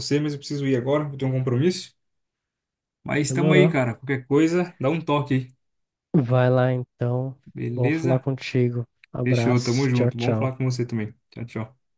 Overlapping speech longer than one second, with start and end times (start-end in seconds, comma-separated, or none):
9.2-10.6